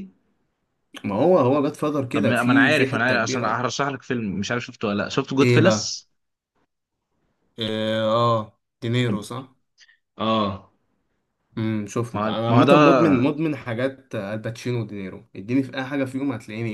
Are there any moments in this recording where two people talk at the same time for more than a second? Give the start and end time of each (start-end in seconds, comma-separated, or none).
2.1-3.6